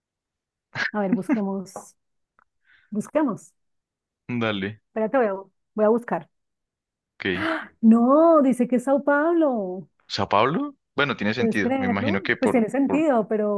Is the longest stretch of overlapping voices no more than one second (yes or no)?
no